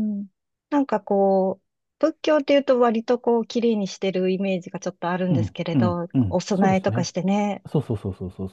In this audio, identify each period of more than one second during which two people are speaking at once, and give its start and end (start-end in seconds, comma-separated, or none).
5.3-7.1